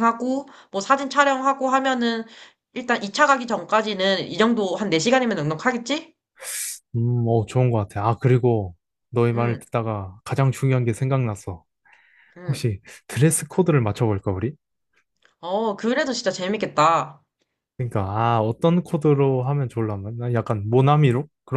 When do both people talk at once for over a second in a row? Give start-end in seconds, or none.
none